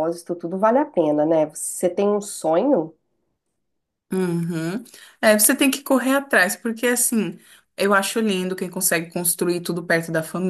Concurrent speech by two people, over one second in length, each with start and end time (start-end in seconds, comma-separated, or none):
none